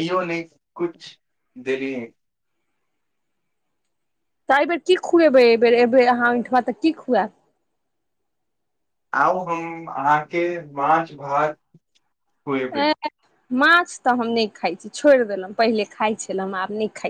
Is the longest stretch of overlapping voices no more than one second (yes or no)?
yes